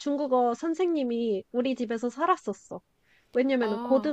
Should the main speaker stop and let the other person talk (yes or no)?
no